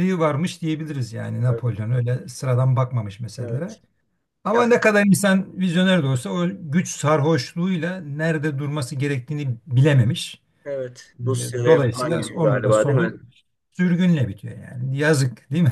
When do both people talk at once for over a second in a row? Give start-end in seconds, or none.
11.6-13.1